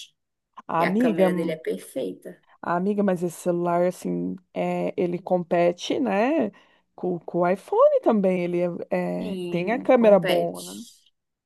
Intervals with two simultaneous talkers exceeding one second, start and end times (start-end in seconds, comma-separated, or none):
9.3-10.6